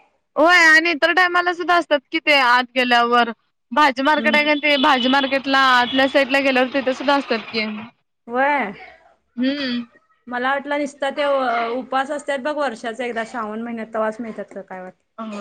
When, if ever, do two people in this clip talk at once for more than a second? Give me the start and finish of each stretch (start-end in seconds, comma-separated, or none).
none